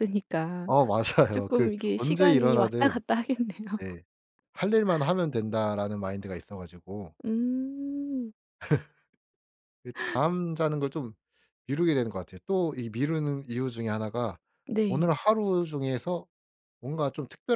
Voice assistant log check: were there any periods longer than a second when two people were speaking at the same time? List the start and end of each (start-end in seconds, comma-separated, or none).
1.3-3.0